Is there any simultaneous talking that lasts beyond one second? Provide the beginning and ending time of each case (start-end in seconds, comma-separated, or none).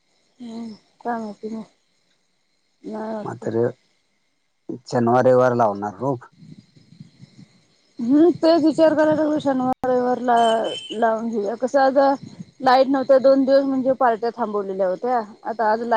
none